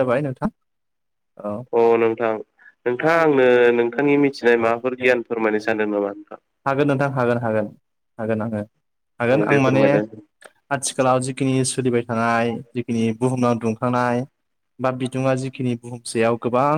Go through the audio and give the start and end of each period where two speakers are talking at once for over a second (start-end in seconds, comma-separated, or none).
none